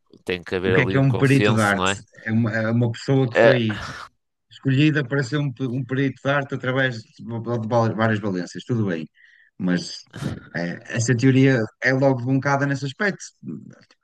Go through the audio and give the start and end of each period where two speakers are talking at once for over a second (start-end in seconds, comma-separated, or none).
0.7-2.0